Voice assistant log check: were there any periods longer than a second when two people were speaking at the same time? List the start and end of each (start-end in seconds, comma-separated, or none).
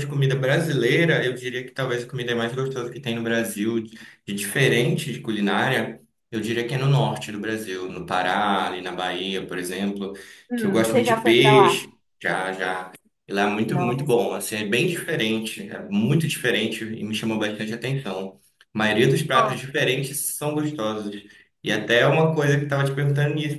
10.6-11.9